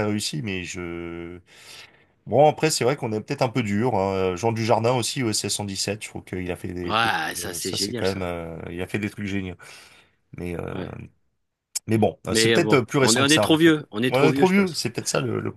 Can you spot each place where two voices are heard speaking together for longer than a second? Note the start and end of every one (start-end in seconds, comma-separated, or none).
6.8-8.2, 12.3-14.8